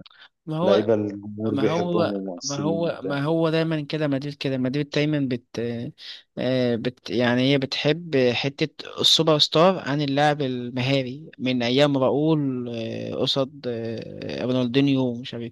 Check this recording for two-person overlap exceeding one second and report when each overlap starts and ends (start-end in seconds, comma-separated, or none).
1.5-2.9